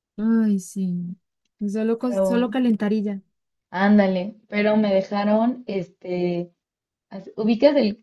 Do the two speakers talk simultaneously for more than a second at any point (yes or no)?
no